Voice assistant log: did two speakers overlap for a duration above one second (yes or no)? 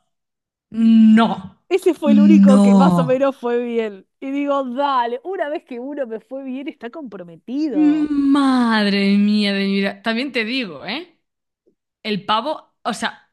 yes